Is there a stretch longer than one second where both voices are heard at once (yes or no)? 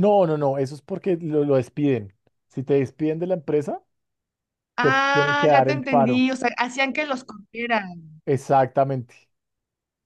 yes